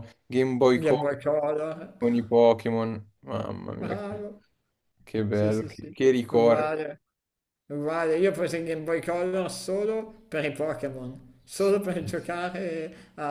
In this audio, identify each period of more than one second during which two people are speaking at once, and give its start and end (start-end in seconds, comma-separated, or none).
5.3-6.7